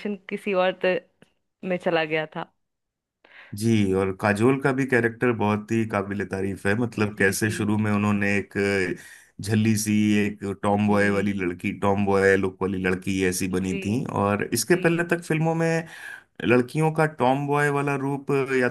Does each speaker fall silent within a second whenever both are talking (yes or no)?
yes